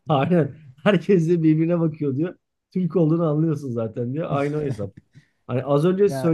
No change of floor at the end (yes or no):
yes